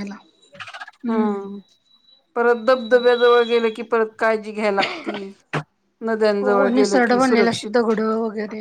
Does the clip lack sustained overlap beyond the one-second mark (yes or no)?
no